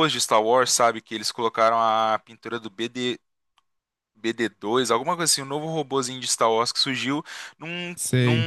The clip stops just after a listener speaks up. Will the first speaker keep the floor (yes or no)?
yes